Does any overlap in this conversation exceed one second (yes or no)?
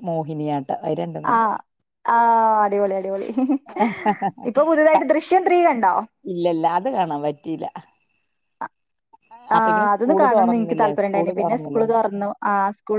yes